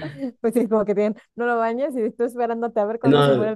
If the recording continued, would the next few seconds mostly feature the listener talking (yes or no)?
yes